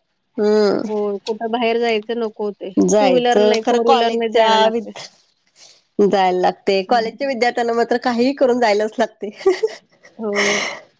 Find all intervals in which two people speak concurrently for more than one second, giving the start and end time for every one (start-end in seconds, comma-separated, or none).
2.9-4.8